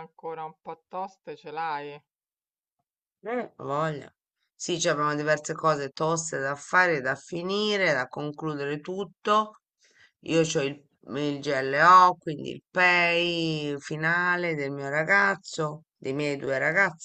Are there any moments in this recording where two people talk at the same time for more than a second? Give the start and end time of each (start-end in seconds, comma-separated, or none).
none